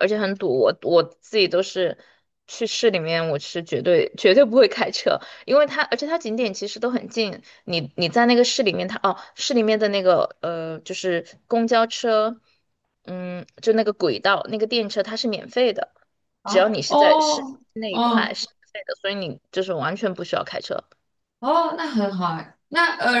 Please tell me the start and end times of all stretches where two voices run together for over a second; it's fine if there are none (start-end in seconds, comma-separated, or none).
16.4-18.4